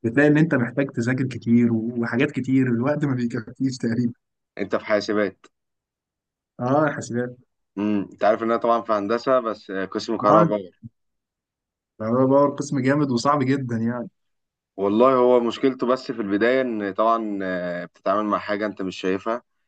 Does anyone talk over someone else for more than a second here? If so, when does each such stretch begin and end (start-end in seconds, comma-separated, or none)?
none